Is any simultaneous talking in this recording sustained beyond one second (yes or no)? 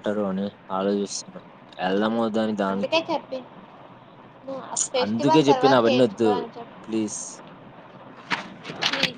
yes